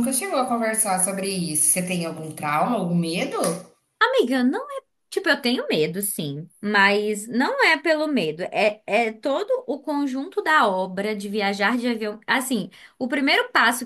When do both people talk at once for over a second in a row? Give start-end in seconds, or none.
none